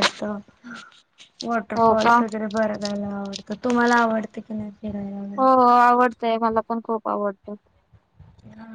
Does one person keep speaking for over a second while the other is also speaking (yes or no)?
no